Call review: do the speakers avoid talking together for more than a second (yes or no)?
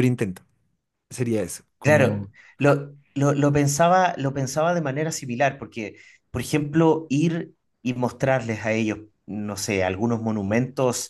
yes